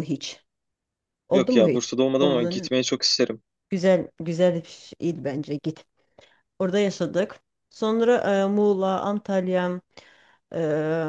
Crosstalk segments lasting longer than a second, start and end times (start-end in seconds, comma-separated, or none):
1.3-2.7